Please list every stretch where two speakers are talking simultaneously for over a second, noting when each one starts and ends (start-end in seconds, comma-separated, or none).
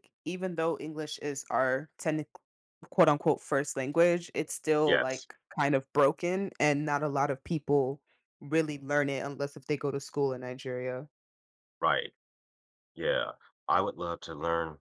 none